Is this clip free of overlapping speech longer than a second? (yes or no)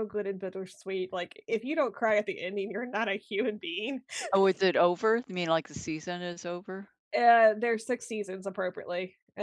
yes